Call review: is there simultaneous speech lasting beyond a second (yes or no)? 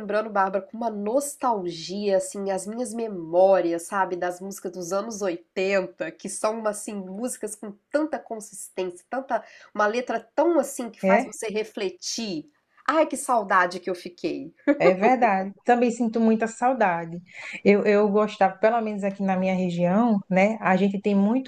no